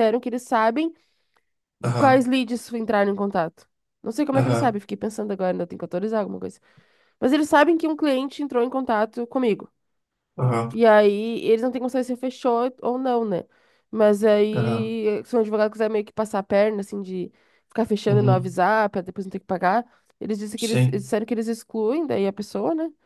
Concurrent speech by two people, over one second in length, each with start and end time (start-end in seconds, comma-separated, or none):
none